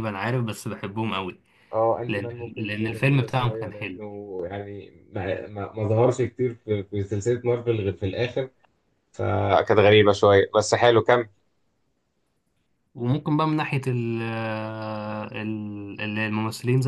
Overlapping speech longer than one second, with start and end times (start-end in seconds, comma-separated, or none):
2.1-4.0